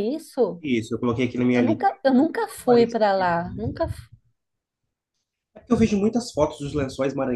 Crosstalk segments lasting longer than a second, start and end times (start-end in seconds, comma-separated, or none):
none